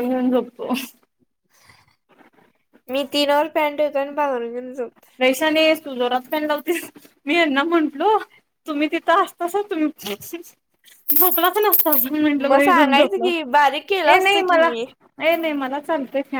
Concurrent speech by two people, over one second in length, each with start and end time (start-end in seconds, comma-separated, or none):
12.5-14.7